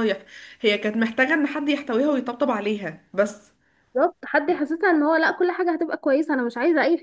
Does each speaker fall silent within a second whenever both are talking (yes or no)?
yes